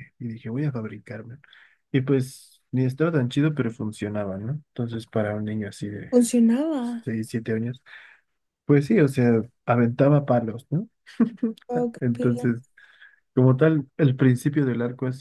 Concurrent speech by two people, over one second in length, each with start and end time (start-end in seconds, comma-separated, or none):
none